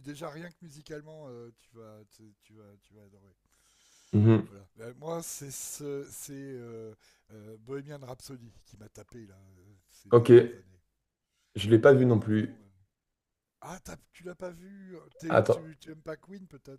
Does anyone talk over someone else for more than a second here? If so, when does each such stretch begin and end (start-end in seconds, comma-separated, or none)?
none